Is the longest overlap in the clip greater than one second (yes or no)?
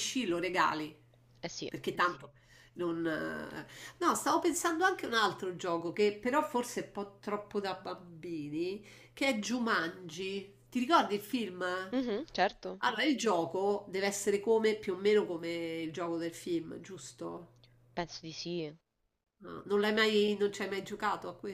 no